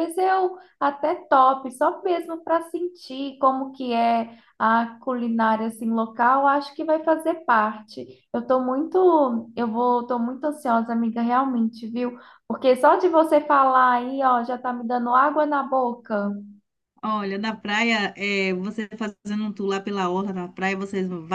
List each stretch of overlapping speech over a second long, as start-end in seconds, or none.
none